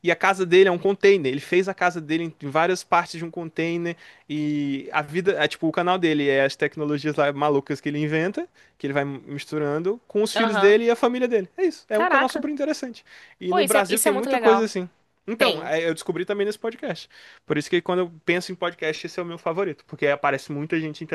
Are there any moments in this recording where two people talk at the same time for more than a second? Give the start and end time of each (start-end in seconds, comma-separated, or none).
13.5-14.7